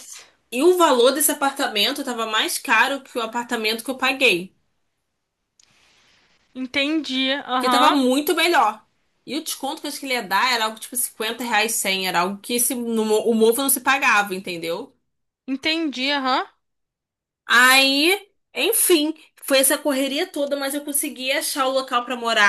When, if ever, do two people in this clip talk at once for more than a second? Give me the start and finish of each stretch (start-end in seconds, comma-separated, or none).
none